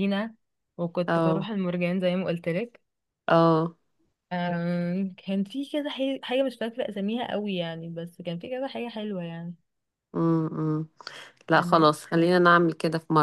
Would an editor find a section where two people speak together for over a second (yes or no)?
no